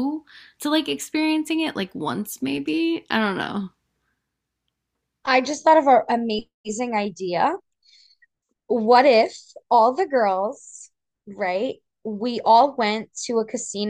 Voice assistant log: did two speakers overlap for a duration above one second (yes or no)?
no